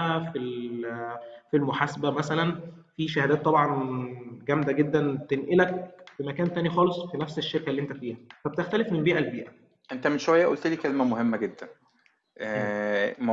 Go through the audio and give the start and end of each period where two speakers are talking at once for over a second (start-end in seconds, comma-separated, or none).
none